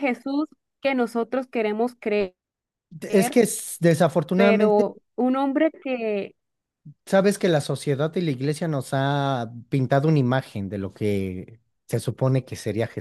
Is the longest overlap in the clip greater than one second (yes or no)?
no